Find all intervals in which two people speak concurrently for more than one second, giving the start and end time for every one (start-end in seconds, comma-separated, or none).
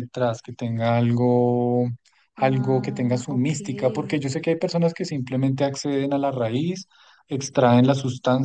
2.4-4.2